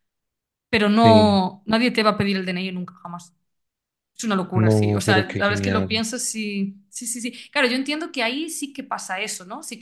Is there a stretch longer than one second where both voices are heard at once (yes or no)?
yes